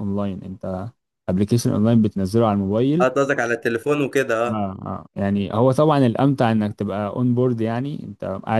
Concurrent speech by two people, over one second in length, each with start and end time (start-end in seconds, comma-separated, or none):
none